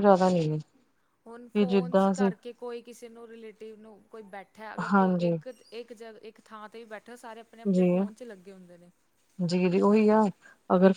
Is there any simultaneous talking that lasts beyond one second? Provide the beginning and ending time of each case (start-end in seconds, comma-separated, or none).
none